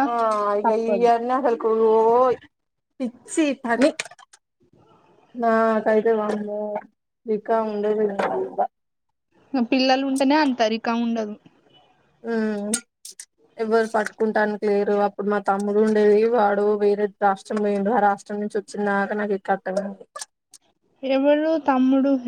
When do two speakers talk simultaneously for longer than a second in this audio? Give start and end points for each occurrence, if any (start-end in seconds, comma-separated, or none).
none